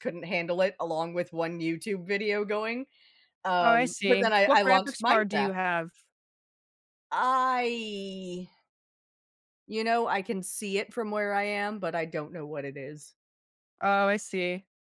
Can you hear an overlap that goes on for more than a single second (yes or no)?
yes